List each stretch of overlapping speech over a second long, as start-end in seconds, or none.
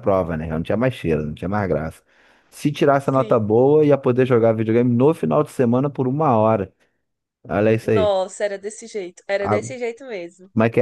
none